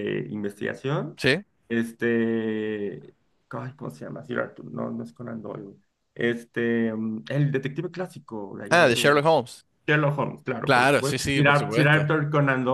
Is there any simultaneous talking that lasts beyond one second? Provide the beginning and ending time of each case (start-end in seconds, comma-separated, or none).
10.6-12.1